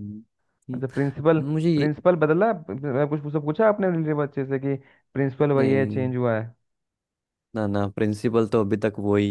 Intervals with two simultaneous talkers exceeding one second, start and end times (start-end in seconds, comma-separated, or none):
none